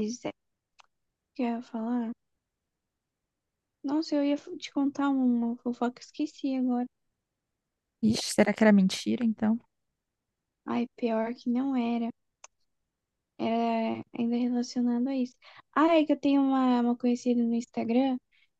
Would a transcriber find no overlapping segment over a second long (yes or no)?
yes